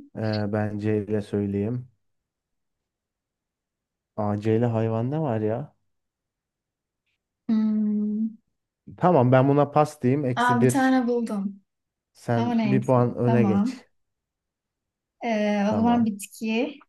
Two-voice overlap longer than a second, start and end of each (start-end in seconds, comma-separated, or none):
12.4-13.8